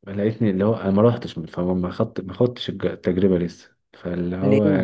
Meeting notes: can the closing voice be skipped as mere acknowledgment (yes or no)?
yes